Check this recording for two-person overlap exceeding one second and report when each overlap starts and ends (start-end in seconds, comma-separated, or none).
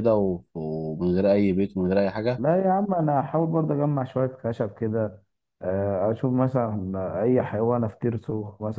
none